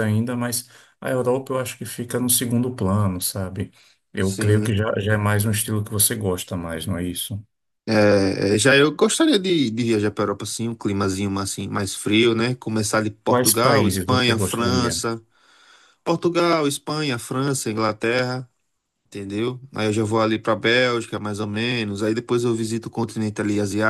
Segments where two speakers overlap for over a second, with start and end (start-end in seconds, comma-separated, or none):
13.3-15.0